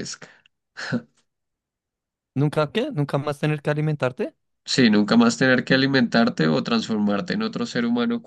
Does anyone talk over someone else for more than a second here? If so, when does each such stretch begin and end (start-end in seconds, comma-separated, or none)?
none